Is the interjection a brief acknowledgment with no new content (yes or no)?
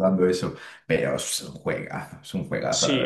no